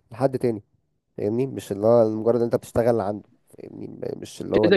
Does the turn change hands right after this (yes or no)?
yes